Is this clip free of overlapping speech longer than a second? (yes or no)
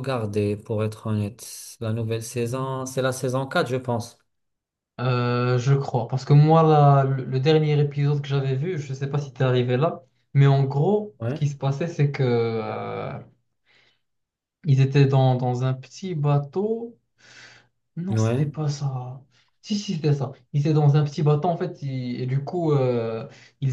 yes